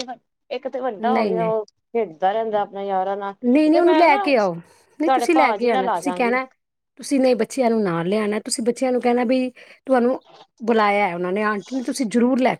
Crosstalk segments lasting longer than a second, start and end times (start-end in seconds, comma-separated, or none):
5.0-6.3